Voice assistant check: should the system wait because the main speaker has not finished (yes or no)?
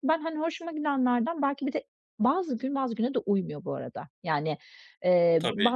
yes